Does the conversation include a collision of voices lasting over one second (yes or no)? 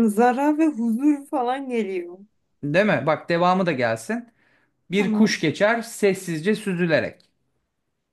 no